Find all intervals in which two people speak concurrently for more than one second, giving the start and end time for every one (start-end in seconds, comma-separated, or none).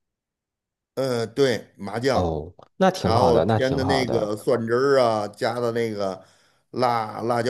3.0-4.3